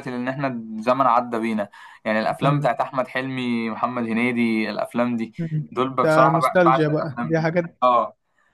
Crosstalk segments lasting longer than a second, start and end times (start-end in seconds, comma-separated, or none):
5.7-7.8